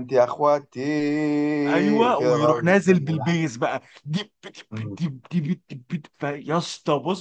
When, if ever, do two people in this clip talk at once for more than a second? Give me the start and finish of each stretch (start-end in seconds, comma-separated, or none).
2.2-3.4